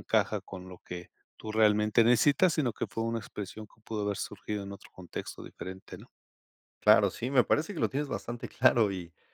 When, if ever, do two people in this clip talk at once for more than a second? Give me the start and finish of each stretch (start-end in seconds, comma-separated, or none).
none